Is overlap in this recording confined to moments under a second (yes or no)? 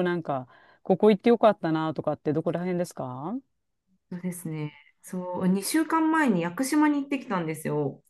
yes